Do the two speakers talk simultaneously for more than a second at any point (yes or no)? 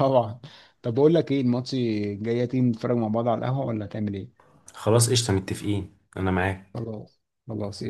no